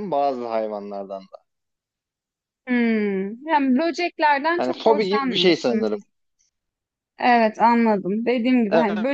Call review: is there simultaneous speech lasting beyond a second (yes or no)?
yes